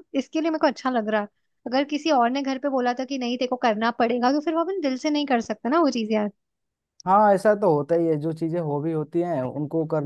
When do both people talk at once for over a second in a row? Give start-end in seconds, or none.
none